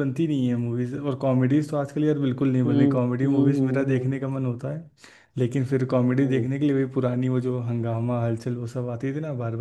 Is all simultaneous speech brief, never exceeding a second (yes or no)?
no